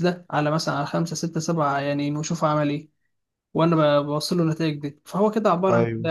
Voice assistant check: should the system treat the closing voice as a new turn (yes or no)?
no